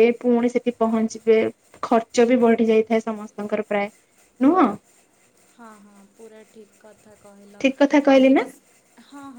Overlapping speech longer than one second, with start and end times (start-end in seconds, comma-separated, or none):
none